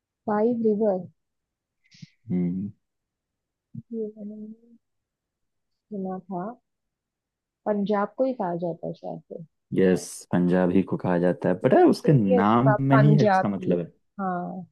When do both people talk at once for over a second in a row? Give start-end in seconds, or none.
11.6-13.8